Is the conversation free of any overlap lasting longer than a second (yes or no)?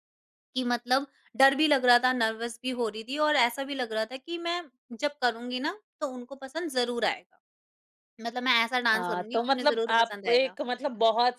no